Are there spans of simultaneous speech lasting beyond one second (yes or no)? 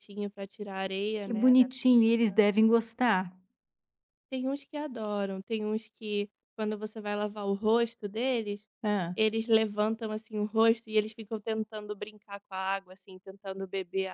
yes